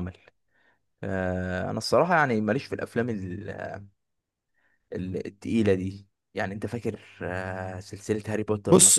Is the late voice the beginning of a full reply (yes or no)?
yes